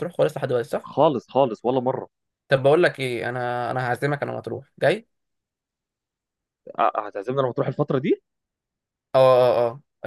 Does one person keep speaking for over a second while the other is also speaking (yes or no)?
no